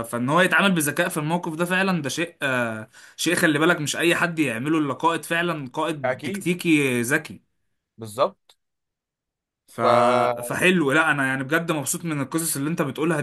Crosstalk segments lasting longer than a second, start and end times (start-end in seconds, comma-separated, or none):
none